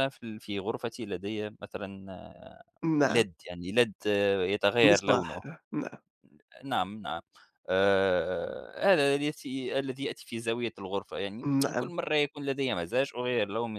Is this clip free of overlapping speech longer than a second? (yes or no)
yes